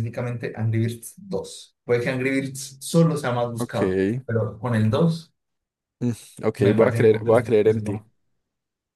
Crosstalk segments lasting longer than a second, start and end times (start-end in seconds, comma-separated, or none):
6.6-8.0